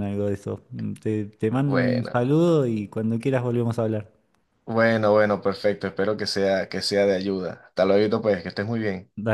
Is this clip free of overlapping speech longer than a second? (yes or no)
yes